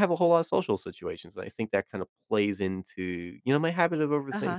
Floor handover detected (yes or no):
yes